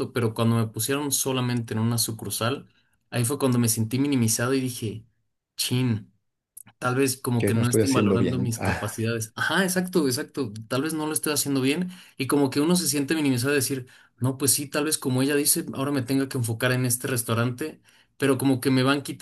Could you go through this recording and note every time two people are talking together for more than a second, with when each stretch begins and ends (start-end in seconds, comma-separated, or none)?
7.4-9.0